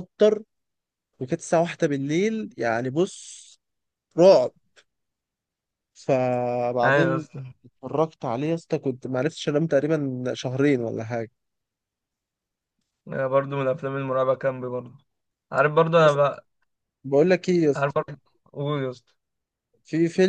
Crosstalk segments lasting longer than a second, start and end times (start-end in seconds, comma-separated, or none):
none